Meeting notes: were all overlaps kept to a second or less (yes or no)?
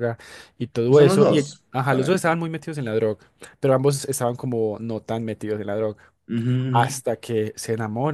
no